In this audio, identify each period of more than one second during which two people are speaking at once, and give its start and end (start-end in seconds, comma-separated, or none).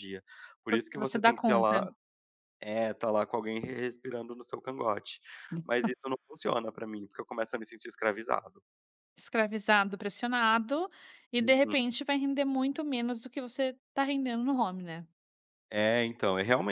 0.7-1.9